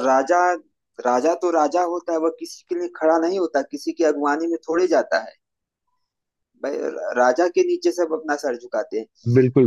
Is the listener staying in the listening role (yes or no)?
no